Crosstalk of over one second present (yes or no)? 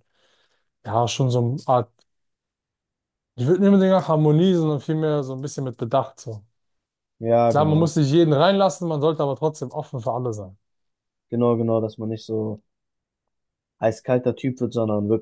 no